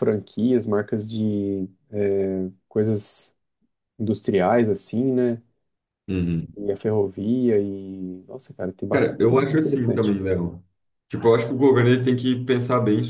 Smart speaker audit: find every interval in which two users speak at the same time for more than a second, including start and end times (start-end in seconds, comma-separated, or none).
8.9-10.1